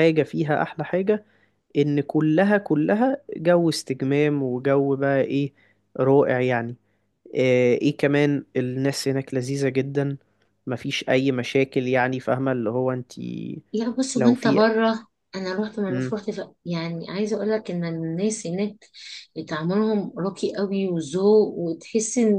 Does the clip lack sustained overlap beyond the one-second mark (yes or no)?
yes